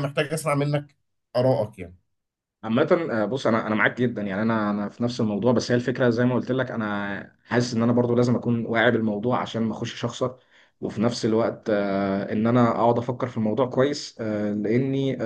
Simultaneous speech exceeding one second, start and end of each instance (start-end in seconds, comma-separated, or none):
none